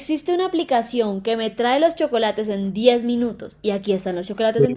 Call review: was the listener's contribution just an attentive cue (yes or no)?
no